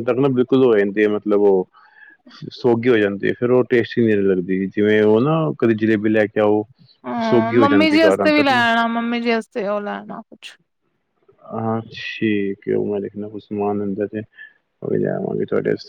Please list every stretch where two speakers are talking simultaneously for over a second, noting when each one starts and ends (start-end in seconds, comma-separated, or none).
7.2-8.6